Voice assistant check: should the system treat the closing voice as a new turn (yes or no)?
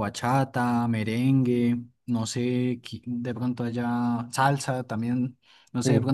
no